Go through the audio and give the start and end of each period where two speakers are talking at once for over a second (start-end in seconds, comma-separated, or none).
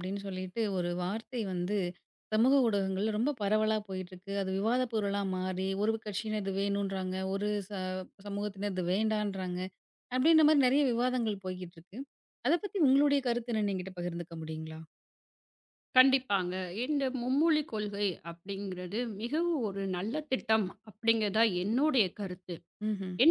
none